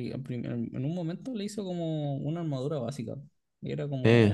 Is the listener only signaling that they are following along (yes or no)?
yes